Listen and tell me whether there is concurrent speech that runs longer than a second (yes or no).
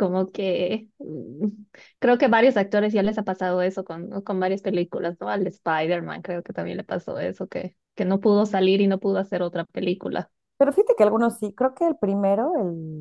no